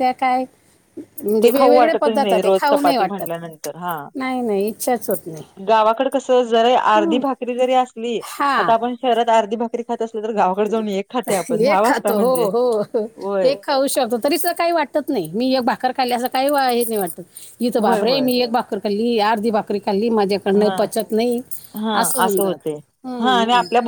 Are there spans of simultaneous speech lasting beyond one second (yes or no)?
yes